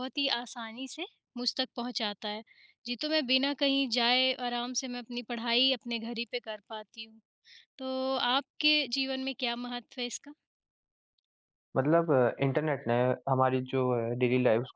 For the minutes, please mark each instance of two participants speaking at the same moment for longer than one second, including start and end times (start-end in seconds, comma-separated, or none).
none